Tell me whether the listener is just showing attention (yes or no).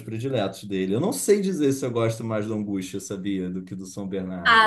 no